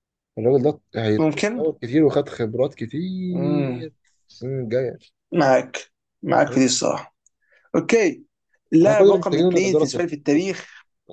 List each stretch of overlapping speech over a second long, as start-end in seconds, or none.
8.8-10.6